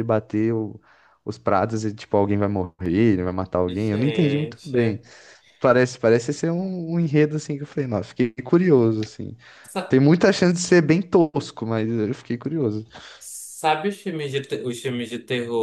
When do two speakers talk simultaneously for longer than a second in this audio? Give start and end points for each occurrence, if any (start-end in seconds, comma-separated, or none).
3.7-5.0